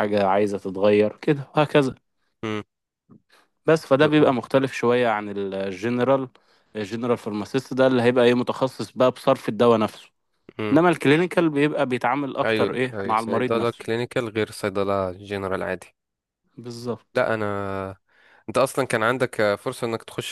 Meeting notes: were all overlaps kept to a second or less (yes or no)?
no